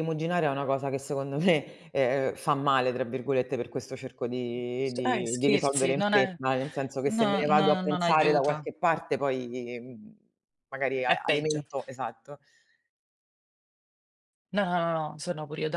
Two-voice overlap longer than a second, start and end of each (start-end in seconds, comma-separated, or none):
4.9-6.3, 7.0-8.7